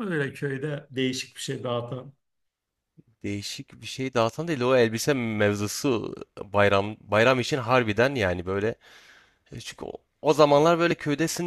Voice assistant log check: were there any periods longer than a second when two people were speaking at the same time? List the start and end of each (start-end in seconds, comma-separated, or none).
none